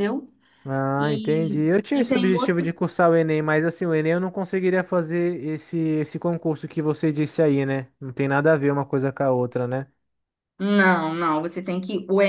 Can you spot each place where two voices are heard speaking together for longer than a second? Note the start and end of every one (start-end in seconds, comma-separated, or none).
1.0-2.7